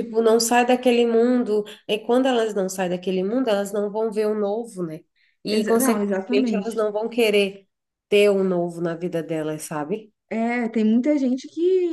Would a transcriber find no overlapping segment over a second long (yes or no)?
no